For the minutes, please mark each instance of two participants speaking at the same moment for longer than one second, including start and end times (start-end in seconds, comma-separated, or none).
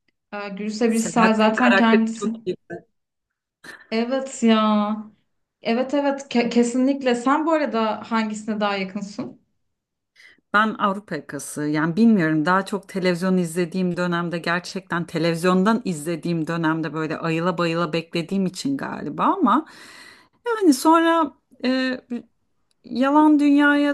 0.9-2.3